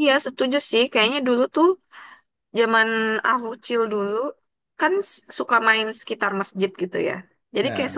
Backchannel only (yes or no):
yes